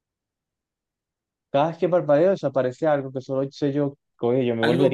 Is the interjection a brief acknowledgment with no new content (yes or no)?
no